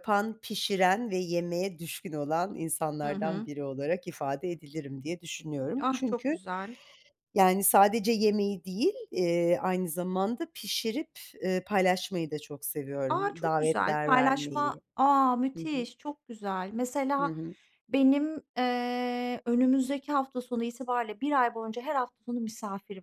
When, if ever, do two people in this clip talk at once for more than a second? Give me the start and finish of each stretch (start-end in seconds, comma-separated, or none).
13.1-14.8